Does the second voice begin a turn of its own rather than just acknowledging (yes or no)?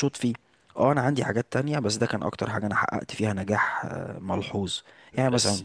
no